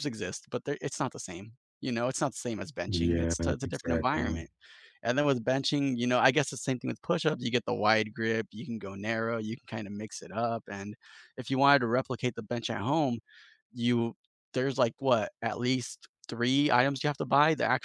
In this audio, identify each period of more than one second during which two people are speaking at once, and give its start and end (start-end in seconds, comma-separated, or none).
2.9-4.4